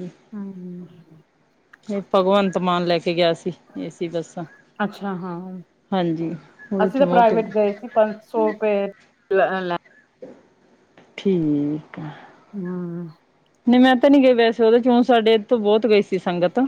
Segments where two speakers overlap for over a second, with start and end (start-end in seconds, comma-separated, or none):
none